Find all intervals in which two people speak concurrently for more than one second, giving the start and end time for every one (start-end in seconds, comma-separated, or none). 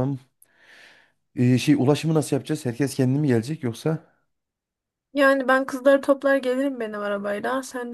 none